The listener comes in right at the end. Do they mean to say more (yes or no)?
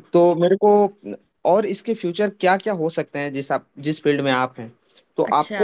no